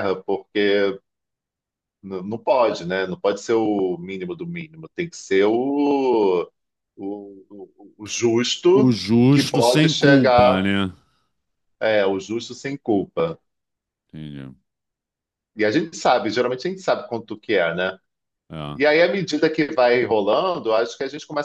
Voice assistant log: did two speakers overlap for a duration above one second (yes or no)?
yes